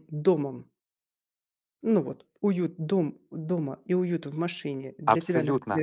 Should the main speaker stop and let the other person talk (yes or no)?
yes